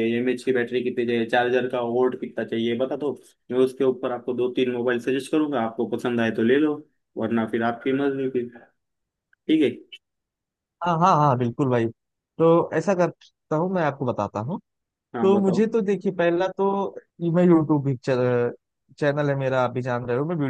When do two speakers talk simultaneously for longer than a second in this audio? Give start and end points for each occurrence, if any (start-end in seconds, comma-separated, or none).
none